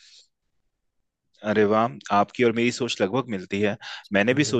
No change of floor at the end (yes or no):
yes